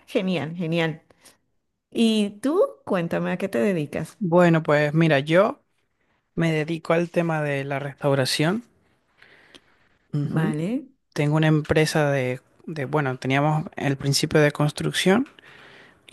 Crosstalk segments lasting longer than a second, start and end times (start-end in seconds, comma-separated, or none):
none